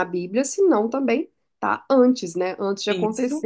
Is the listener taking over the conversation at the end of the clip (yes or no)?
no